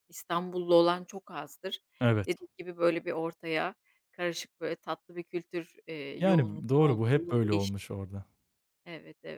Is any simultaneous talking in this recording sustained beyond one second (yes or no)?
yes